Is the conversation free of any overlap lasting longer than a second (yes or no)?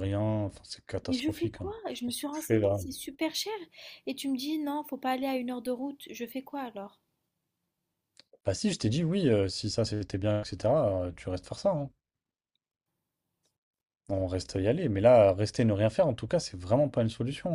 no